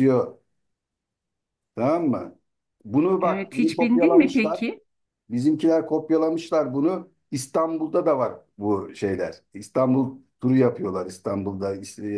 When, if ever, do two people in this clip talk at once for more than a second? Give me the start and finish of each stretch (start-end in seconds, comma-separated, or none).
3.2-4.6